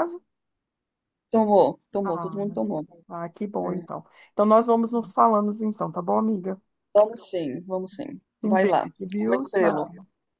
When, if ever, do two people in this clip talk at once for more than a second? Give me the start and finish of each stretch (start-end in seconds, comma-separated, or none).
8.4-9.8